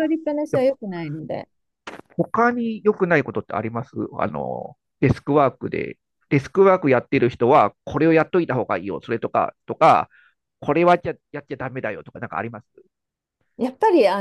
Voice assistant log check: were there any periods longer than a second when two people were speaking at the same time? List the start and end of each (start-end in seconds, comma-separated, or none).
none